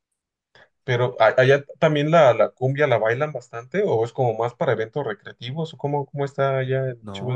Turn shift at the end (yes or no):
yes